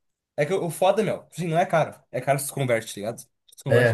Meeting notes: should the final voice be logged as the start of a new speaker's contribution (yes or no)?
yes